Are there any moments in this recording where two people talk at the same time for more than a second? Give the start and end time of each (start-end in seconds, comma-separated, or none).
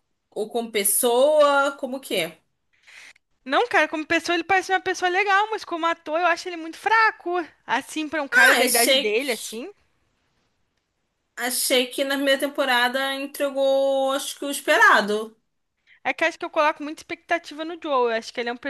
8.3-9.6